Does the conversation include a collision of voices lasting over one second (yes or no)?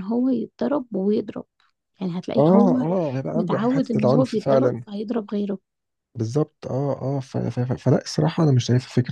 yes